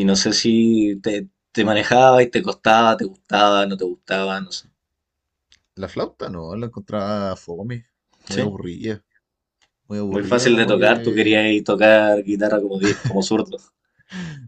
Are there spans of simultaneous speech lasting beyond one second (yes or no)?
yes